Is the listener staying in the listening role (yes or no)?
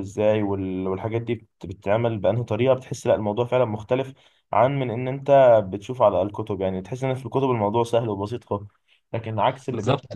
no